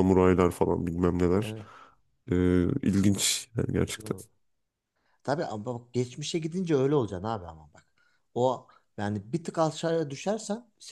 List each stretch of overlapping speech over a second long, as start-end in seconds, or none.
none